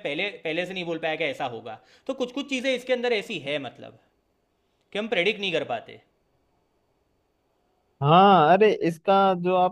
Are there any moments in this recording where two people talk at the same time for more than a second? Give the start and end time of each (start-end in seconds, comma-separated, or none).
none